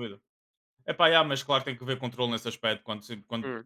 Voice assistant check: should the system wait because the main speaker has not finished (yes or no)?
yes